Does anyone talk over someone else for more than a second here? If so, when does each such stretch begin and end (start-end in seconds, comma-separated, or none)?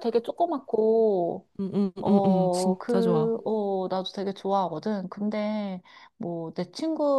2.0-3.3